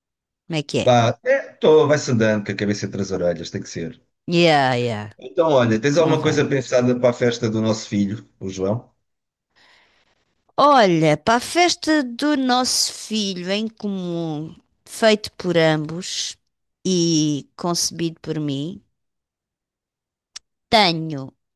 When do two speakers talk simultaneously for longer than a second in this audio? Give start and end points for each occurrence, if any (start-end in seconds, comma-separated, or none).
none